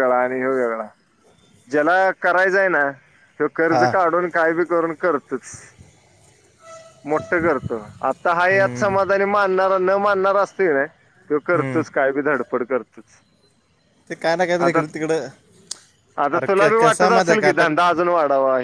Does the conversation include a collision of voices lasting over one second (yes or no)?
yes